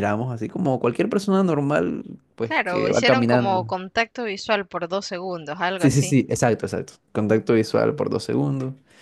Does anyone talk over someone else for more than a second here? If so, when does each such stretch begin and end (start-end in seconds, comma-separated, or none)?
2.4-3.8